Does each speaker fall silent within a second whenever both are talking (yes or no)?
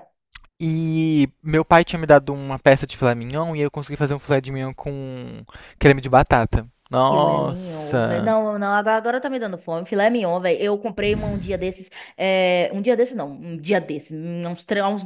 no